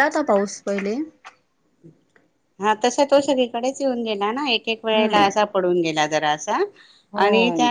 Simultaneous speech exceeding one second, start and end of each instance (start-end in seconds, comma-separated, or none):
none